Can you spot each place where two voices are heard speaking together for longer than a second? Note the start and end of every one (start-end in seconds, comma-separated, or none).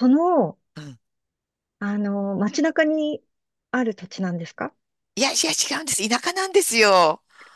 none